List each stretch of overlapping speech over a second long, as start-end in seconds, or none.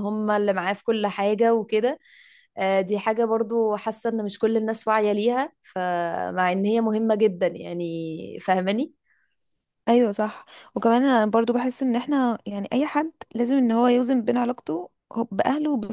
none